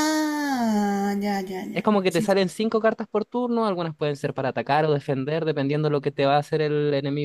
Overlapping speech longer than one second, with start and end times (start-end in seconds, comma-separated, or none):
none